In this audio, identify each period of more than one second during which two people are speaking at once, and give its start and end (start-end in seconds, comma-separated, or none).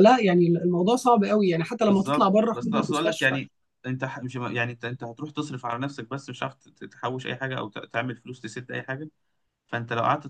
1.9-3.4